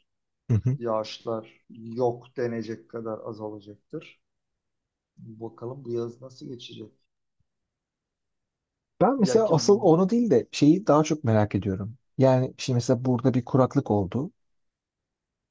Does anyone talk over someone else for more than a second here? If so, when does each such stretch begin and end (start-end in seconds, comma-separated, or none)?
none